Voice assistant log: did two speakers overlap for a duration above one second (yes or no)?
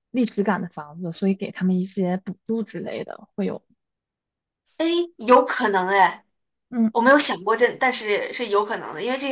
no